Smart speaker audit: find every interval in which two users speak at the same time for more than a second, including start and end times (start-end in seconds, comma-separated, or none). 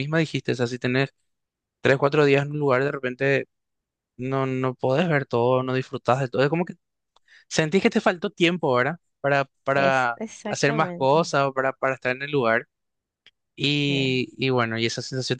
9.7-11.3